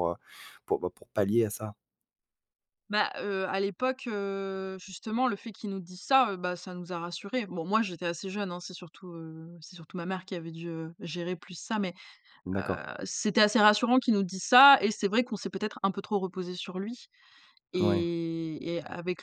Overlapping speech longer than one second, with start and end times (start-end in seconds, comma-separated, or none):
none